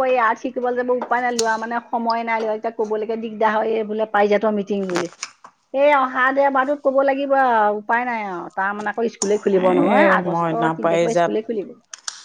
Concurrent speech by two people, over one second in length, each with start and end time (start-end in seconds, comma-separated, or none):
9.5-11.4